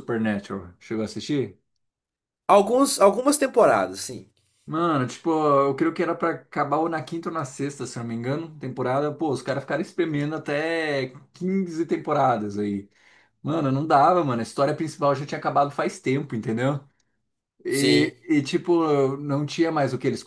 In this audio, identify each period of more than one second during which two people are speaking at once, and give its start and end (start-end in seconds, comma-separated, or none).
none